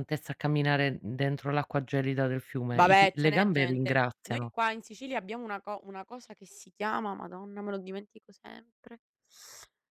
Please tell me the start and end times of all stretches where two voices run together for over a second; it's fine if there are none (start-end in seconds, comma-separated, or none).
2.7-4.5